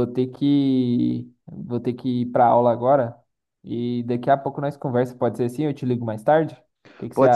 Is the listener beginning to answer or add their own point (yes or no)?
yes